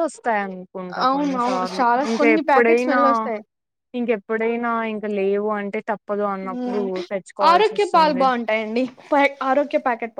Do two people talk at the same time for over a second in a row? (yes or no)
yes